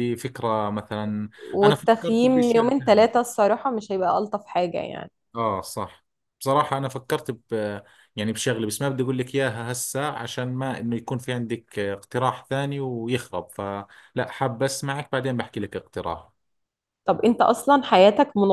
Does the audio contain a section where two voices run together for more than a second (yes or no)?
yes